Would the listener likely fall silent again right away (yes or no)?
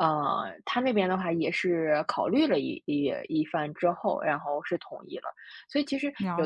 yes